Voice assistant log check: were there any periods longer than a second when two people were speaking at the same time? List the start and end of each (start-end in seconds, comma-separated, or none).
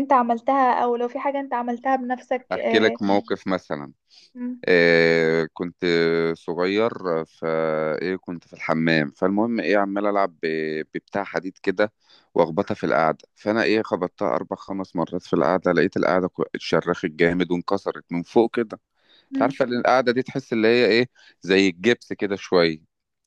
none